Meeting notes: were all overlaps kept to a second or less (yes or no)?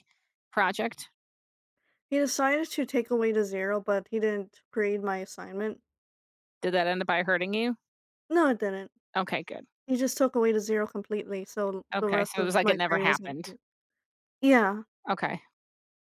no